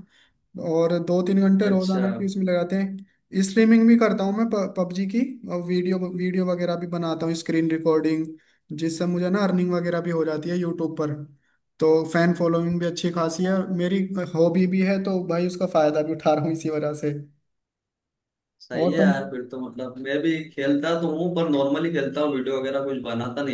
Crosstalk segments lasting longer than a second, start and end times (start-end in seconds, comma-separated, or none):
none